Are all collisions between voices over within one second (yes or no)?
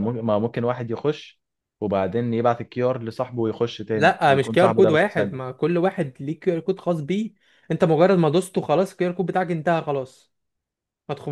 no